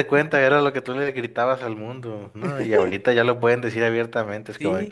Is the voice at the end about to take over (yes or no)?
yes